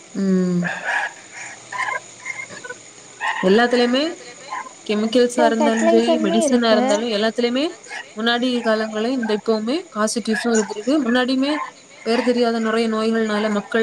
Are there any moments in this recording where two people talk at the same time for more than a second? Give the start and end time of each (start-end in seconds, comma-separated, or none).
5.3-6.9